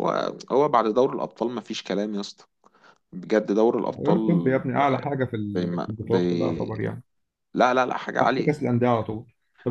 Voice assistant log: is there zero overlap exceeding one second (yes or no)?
no